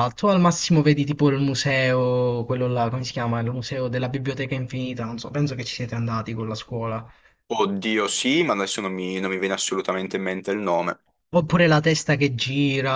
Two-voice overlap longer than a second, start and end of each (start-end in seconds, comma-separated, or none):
none